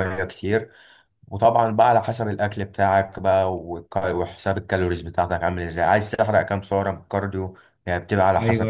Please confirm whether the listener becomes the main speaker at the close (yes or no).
yes